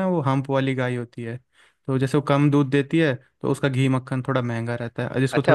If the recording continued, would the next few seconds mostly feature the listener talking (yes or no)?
yes